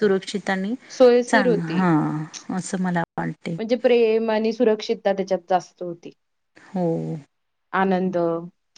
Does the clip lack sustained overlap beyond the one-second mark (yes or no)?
yes